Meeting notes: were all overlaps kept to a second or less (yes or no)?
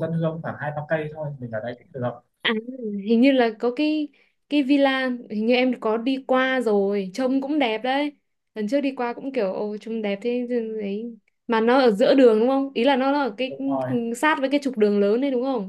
yes